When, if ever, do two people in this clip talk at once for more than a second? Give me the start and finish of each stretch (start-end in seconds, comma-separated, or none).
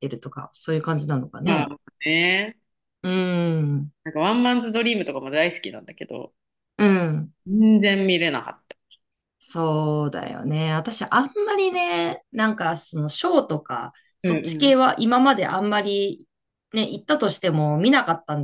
none